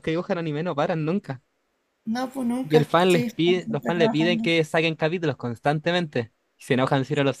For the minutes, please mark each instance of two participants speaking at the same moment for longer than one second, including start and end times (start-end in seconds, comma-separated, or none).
2.6-4.5